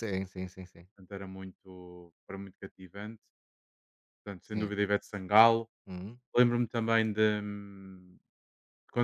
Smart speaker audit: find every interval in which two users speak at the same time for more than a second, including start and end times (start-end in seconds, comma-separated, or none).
none